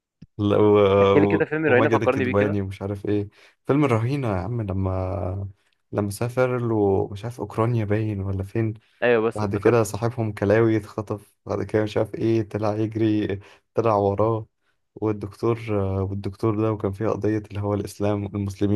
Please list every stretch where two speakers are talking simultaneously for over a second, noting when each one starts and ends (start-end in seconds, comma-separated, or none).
1.4-2.6